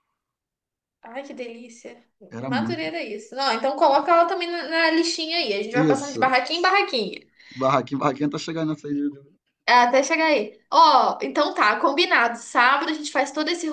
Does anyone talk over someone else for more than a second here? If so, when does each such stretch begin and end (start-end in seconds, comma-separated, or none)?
none